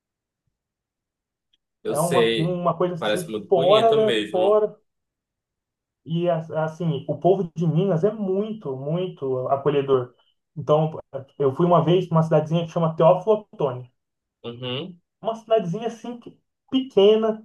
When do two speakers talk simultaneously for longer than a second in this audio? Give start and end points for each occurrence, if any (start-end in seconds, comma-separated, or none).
1.9-4.7